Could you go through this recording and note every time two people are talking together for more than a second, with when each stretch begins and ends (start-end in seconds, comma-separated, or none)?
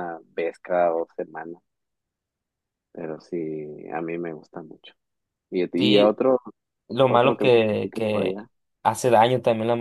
7.1-8.5